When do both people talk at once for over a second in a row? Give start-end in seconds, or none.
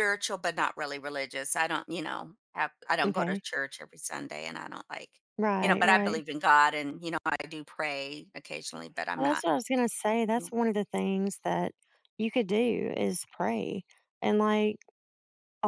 none